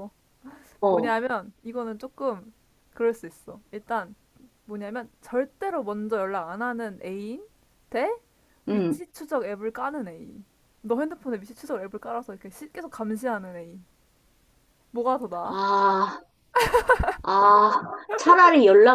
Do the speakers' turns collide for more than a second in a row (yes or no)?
no